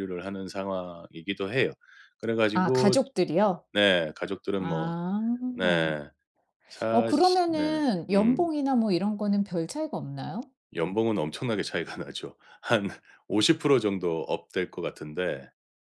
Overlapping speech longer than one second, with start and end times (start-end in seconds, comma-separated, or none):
6.9-8.5